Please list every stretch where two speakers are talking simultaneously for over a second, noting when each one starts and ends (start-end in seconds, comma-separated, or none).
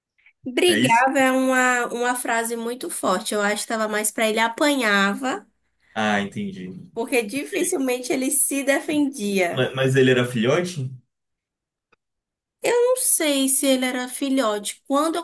none